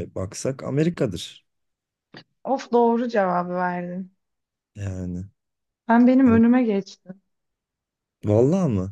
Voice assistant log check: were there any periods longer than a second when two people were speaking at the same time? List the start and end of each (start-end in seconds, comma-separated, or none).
none